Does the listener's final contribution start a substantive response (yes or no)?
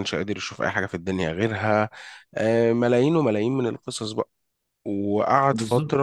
yes